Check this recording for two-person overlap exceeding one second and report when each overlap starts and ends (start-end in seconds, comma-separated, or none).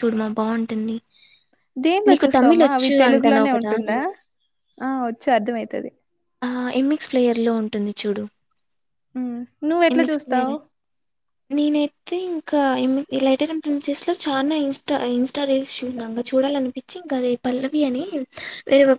2.1-3.7